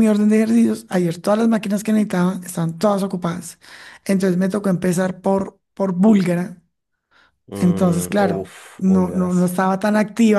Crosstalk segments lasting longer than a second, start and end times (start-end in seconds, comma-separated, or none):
7.6-9.6